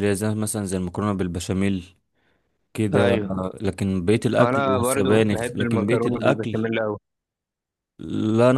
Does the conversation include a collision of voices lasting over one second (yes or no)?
yes